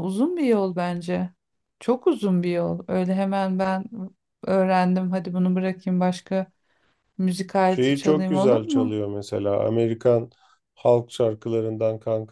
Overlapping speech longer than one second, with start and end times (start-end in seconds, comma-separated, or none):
7.6-9.0